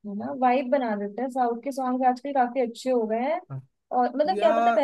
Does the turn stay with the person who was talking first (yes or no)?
yes